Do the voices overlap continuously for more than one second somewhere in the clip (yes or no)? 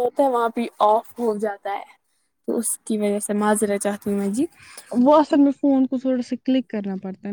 no